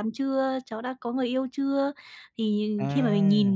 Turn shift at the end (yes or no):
no